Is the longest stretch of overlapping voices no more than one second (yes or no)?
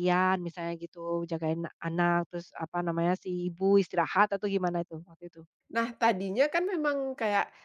yes